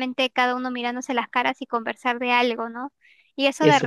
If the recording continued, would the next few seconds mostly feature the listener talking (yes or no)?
no